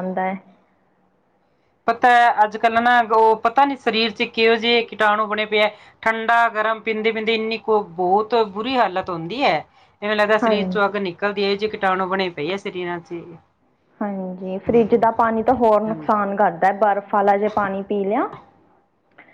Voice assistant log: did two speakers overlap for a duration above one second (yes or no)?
no